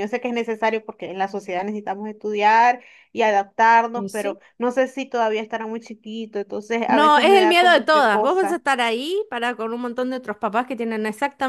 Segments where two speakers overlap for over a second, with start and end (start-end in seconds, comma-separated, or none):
6.9-8.6